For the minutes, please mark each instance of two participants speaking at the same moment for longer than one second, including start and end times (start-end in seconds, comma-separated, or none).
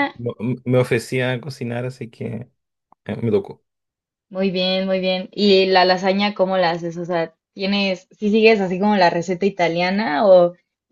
none